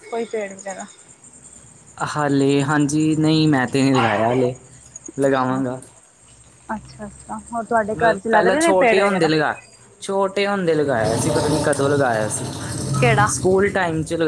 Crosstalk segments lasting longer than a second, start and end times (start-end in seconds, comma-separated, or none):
8.0-9.3